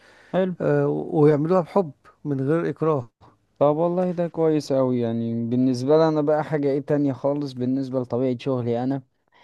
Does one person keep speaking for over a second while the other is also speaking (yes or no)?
no